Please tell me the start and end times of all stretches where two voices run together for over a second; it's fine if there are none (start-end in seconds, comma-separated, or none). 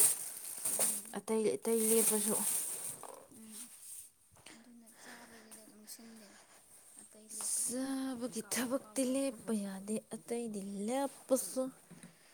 7.5-9.3